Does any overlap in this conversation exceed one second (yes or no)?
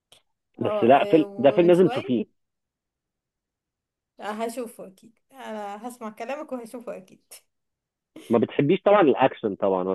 yes